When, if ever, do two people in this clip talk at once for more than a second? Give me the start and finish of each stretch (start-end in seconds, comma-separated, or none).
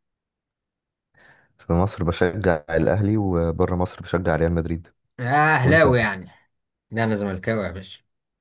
none